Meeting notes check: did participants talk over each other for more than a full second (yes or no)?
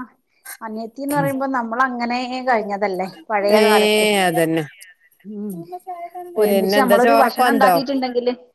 yes